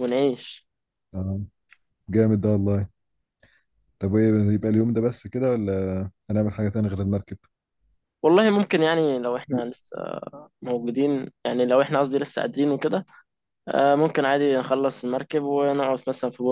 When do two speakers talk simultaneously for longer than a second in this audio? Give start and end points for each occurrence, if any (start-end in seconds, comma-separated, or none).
none